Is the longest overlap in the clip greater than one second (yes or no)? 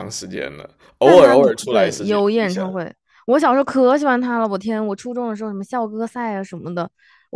yes